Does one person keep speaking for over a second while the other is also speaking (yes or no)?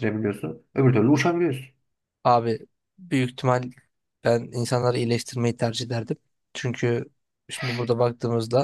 no